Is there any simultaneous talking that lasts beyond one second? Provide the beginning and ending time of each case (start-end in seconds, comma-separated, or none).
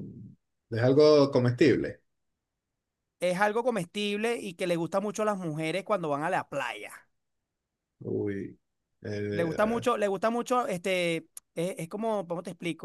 none